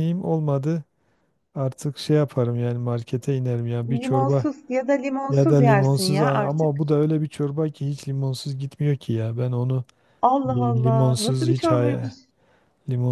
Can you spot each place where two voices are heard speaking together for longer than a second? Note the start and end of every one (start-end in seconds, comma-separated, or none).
5.3-6.8, 10.5-12.1